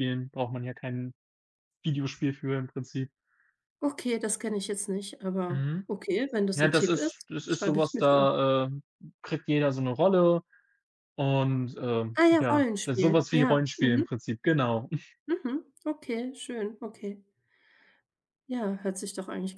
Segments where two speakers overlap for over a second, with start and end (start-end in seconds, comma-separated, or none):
6.5-8.3, 12.2-14.1